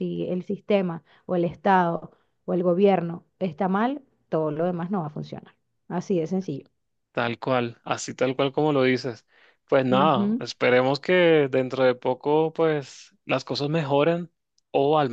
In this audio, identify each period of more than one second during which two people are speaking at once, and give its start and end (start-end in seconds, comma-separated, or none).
none